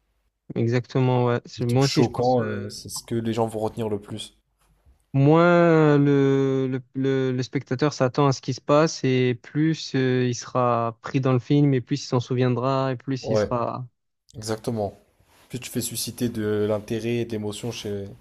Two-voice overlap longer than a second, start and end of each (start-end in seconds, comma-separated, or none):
1.6-2.8